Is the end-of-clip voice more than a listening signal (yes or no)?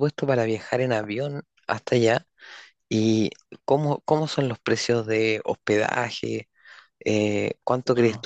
no